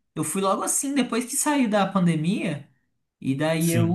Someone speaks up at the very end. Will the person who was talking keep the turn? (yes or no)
yes